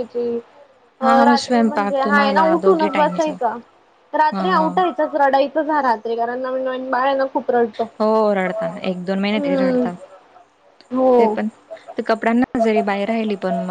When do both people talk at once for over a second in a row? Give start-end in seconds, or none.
1.3-3.3